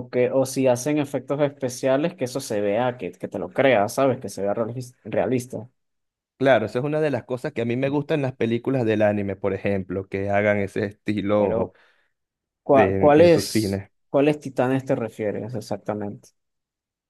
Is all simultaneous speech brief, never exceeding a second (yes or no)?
no